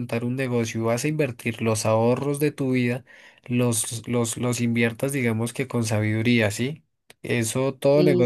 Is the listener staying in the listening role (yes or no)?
yes